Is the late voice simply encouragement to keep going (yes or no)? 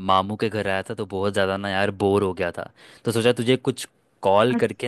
yes